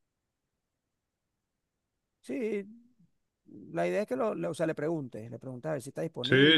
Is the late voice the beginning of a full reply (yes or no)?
yes